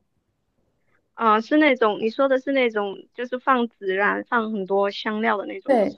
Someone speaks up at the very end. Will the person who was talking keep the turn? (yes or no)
no